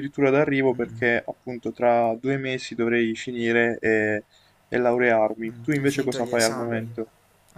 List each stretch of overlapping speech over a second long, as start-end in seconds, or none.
5.5-6.9